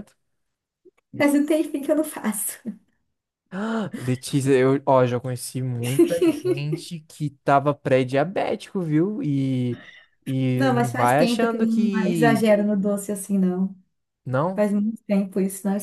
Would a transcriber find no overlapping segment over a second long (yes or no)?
no